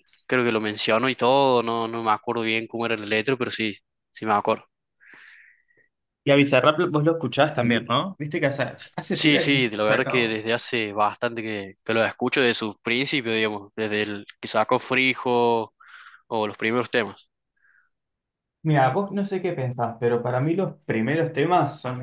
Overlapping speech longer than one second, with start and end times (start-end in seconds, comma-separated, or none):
9.1-10.4